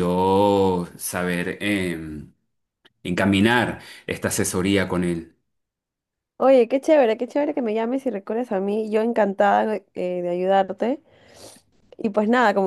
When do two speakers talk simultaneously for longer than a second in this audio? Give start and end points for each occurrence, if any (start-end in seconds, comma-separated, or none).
none